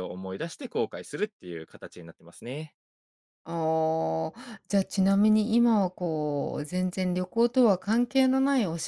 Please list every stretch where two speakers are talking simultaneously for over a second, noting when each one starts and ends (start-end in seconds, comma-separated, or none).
none